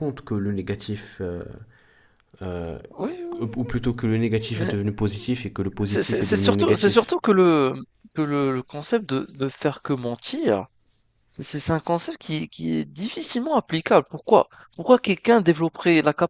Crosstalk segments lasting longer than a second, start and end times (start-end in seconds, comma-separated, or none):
5.8-7.1